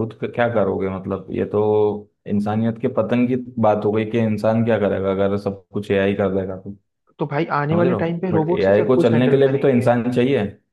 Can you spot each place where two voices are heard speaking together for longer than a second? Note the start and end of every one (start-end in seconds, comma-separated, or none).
7.7-9.9